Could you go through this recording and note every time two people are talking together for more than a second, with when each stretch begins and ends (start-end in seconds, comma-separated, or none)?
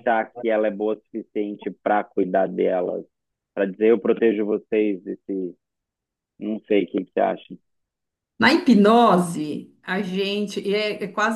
none